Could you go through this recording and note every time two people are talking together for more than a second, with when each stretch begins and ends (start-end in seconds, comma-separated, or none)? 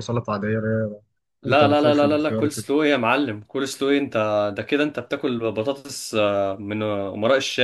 1.5-2.7